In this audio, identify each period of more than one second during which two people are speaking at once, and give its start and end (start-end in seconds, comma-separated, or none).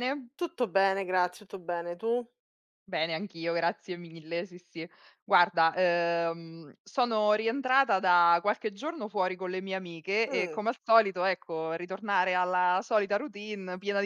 none